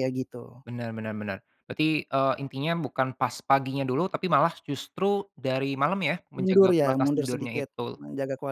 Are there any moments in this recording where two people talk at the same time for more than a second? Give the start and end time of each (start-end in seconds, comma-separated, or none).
6.4-8.0